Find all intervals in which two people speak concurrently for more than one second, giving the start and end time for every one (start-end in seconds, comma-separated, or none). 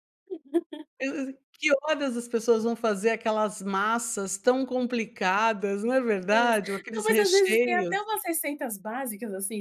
6.3-7.9